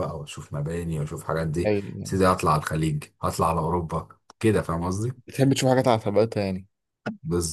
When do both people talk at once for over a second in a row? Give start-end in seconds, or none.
none